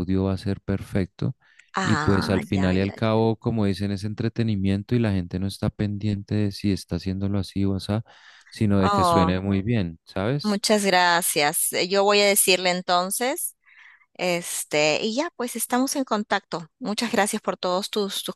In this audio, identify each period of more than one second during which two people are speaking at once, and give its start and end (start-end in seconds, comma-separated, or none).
1.8-3.2